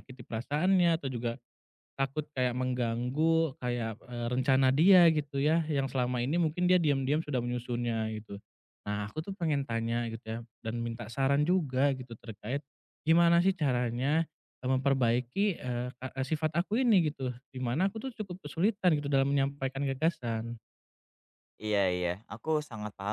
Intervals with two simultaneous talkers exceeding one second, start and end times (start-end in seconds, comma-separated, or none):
none